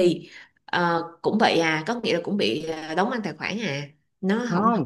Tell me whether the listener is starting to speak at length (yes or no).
yes